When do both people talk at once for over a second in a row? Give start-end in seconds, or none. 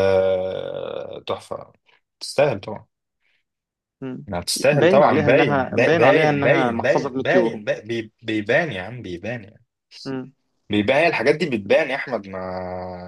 4.7-7.6